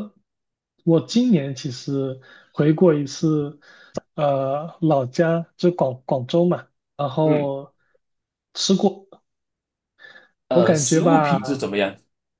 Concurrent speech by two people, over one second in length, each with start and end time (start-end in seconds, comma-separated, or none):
10.5-11.7